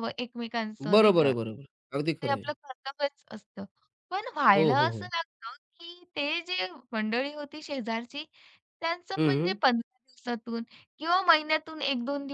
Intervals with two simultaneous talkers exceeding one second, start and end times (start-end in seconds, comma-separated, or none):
none